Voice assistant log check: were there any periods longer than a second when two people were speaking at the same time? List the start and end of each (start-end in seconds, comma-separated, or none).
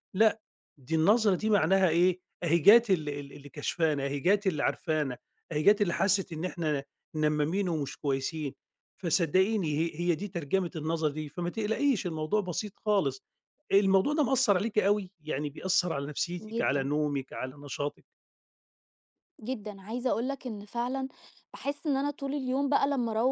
none